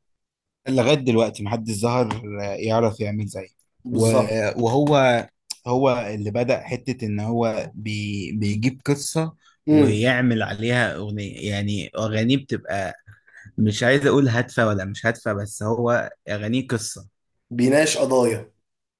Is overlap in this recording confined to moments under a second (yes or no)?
yes